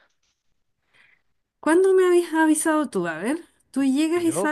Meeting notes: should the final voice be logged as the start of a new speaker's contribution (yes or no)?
no